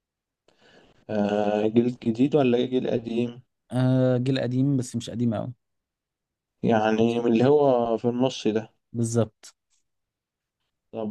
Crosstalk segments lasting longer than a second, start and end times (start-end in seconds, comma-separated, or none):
none